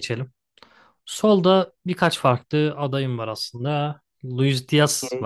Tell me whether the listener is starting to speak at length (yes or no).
no